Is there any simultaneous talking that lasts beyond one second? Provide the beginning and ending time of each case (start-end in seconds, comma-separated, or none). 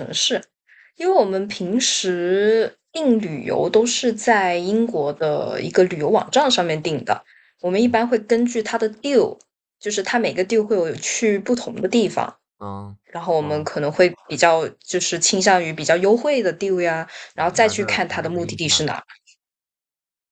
17.3-18.9